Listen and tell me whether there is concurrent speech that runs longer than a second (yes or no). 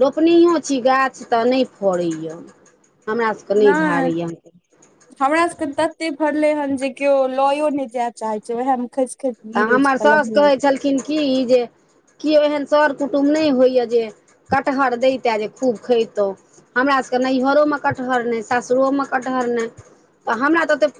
no